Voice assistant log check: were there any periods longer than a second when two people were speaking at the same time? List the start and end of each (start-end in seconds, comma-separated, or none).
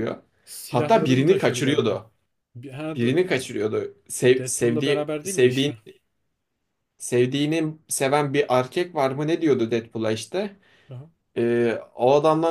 0.7-2.0, 4.4-5.7